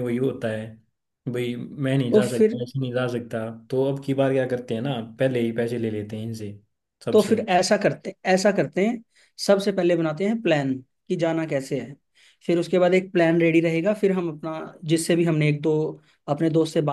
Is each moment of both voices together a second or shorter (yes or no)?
yes